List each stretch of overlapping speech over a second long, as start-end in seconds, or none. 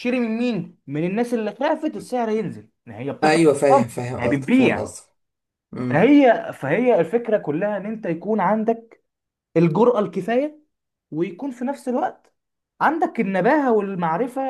3.2-4.9